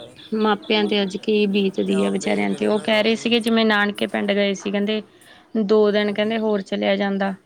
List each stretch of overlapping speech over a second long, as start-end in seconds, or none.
1.9-3.4